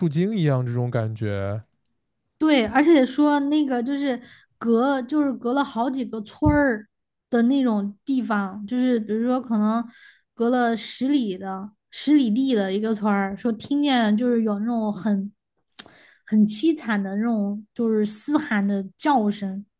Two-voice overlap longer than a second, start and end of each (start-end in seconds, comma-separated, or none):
none